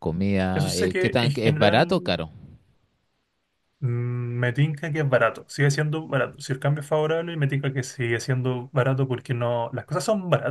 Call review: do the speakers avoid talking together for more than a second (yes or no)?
no